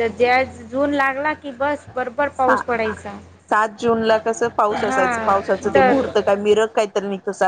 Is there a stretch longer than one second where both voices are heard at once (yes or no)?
yes